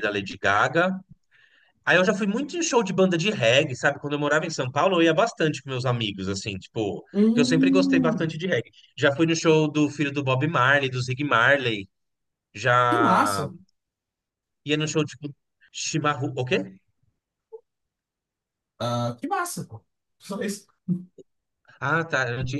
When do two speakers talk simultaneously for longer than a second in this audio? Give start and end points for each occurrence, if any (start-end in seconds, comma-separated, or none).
7.1-8.4